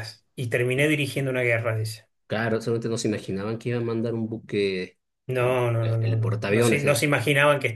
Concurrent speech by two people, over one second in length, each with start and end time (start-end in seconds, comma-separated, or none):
5.4-7.0